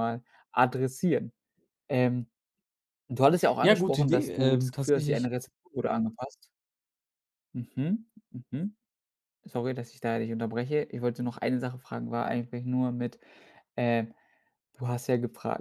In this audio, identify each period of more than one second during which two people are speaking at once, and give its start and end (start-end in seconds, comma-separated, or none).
3.6-5.3